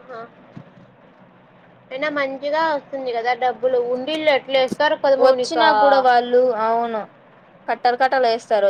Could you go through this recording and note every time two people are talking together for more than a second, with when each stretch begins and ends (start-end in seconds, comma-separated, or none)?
none